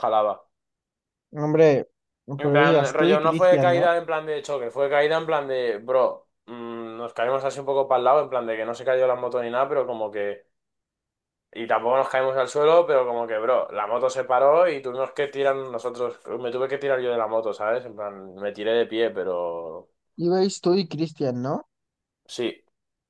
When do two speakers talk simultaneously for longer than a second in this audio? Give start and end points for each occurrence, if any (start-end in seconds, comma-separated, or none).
2.4-3.9